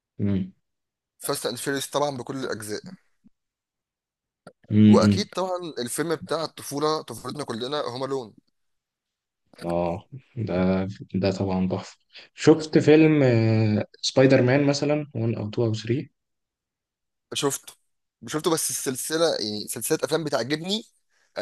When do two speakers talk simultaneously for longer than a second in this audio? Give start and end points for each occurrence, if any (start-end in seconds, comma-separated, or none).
none